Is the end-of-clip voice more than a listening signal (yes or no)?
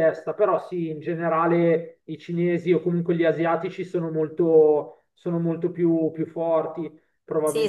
yes